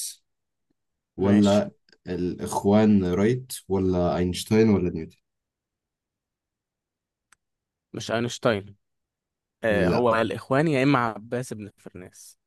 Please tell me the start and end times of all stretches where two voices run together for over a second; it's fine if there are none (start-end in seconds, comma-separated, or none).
none